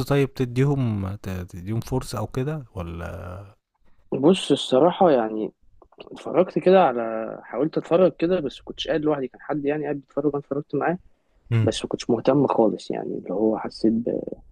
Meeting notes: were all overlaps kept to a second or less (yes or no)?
yes